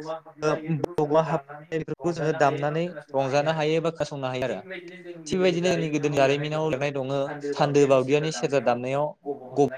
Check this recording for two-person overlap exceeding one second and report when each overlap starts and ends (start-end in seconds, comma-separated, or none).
0.8-3.1